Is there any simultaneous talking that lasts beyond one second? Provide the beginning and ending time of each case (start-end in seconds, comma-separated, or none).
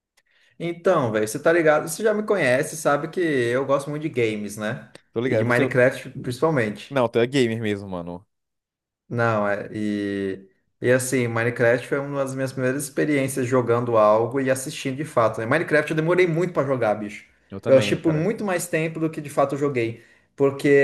none